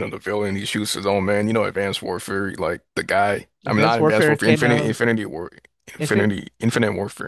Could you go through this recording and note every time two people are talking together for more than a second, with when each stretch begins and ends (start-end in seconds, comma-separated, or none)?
3.7-5.0